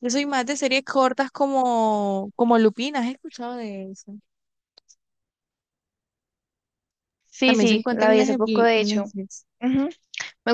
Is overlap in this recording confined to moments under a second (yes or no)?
no